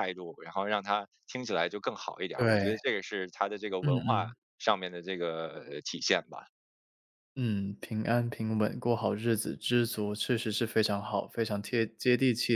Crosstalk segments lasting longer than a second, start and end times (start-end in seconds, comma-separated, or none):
none